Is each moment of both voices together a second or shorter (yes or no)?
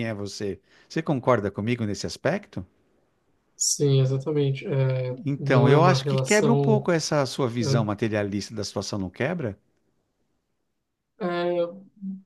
no